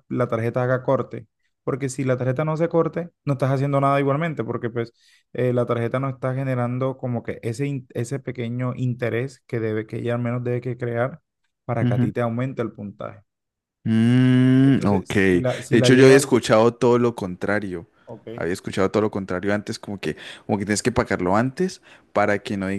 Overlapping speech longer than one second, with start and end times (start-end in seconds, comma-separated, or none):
14.6-16.2